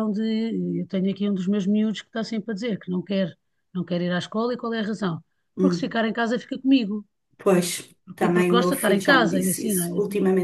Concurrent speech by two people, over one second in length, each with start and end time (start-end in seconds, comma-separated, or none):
8.2-9.9